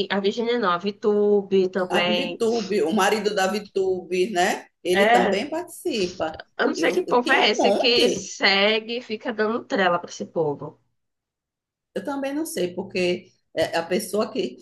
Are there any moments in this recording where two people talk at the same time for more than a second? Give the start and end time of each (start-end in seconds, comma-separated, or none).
6.8-8.3